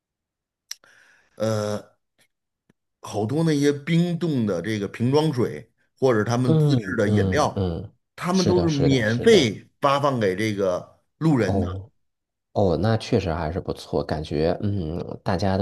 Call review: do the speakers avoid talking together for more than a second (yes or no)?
no